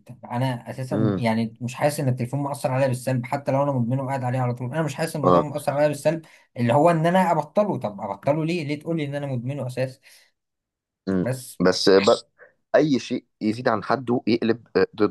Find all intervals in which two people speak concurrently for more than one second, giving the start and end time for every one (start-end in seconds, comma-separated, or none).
none